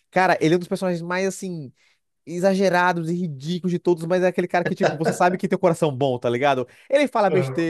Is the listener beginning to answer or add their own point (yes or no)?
no